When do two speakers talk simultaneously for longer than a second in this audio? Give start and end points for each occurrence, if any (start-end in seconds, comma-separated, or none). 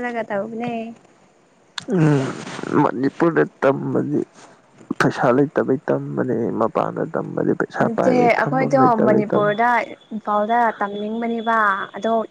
7.8-9.6